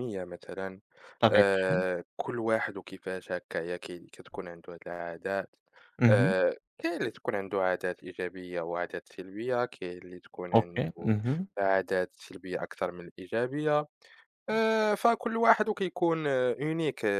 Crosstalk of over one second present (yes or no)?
no